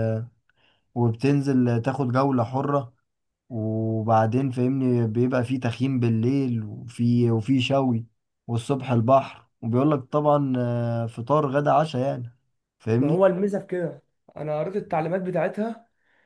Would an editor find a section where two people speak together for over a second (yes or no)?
no